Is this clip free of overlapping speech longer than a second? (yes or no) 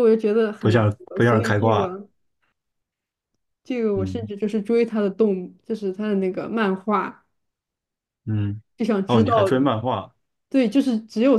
no